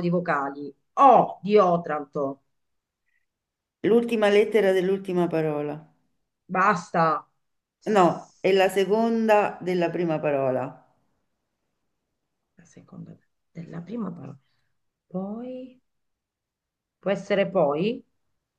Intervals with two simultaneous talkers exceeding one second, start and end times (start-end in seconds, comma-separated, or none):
none